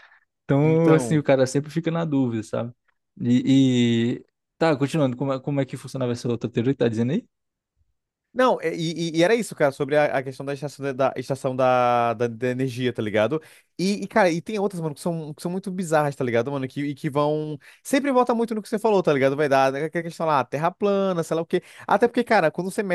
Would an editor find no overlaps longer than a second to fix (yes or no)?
yes